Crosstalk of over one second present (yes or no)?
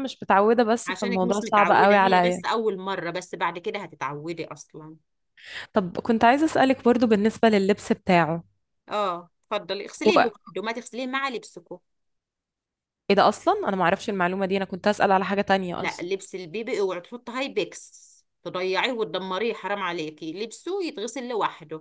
yes